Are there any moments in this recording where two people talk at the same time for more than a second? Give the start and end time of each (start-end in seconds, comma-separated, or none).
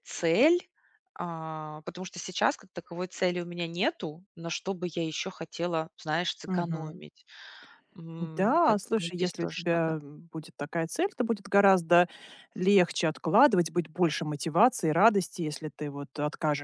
8.4-10.0